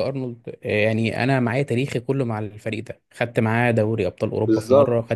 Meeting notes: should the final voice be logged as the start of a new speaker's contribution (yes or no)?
no